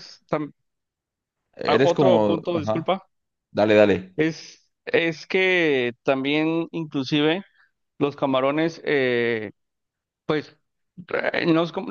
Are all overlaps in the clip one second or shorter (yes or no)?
no